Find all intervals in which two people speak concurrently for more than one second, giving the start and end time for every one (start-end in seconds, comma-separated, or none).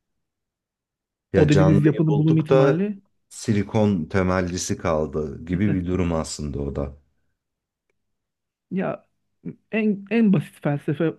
1.4-2.8